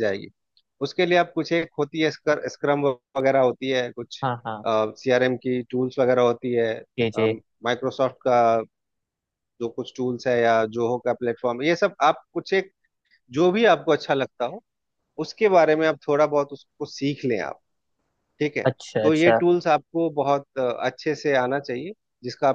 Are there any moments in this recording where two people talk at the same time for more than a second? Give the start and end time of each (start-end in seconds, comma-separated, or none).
none